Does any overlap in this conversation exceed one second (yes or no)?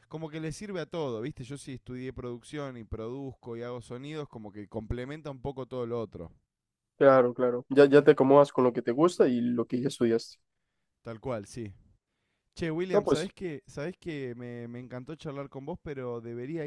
no